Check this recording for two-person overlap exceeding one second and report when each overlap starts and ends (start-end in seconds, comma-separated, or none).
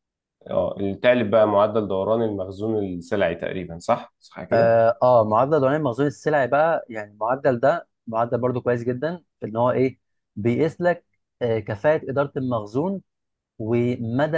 none